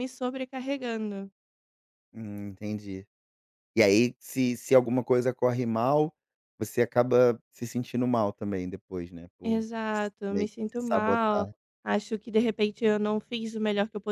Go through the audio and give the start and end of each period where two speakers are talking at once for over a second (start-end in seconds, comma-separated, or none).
9.4-11.5